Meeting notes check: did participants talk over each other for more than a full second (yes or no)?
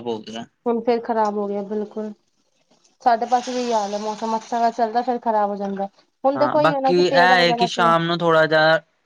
yes